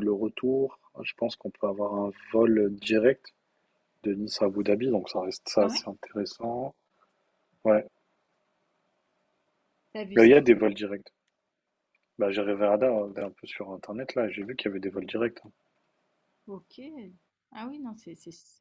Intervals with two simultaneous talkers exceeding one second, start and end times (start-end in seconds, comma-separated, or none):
none